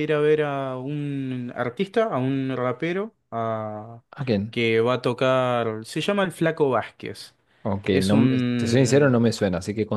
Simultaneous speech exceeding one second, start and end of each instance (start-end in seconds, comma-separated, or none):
7.9-9.1